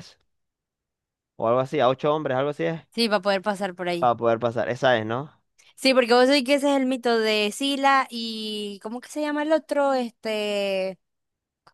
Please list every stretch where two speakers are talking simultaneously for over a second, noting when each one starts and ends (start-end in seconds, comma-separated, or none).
none